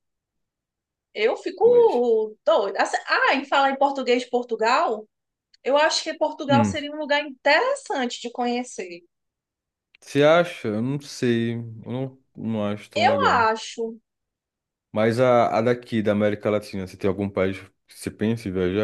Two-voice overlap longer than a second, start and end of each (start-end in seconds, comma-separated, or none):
none